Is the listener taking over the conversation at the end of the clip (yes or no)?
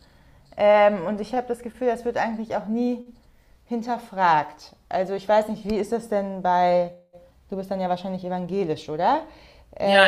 yes